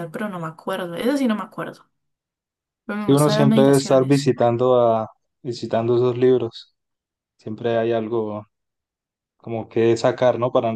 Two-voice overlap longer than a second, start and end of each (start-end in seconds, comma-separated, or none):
3.0-4.3